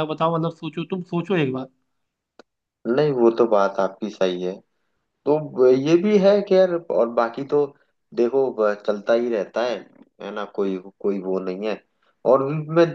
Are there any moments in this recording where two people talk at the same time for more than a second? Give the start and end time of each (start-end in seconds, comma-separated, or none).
none